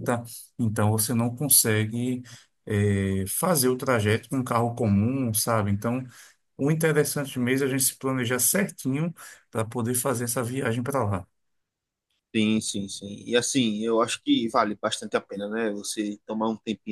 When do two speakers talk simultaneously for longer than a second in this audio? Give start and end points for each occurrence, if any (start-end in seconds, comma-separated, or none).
none